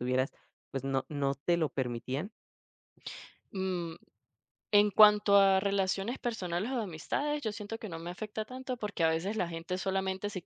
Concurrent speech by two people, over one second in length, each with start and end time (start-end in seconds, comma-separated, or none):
none